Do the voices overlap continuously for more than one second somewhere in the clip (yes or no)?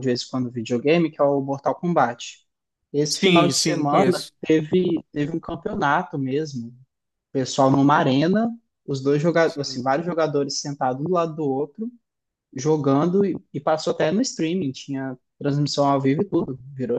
yes